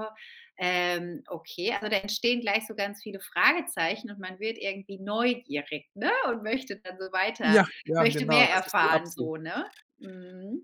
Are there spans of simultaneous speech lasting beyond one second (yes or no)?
yes